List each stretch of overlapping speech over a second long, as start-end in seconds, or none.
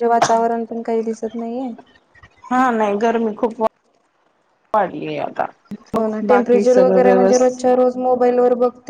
6.0-7.6